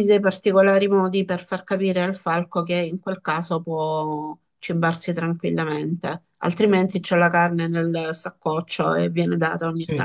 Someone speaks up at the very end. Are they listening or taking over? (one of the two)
taking over